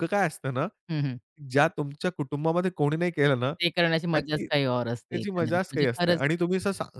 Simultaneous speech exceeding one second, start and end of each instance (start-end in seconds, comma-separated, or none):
4.1-6.2